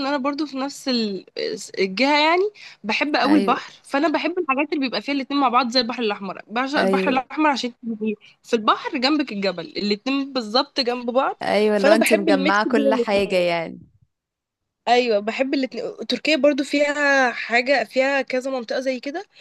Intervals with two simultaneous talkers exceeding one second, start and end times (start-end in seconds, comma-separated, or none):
11.8-13.4